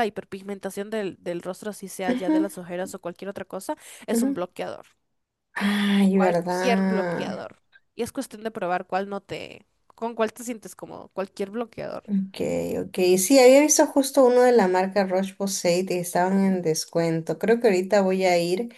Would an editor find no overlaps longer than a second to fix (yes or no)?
no